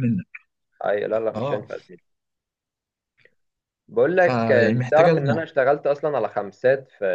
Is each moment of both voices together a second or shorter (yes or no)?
no